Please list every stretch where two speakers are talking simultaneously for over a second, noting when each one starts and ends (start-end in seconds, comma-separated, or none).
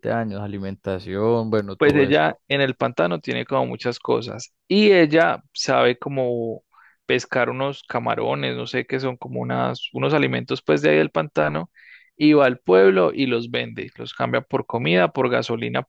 none